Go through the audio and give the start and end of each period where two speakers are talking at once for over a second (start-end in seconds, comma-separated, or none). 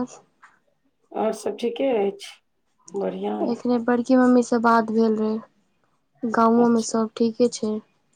none